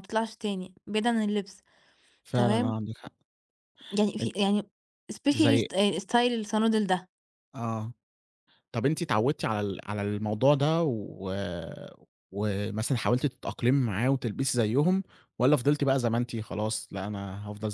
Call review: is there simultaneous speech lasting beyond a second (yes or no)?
no